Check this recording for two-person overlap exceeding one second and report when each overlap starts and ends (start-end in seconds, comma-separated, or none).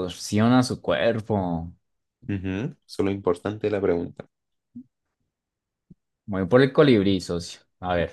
none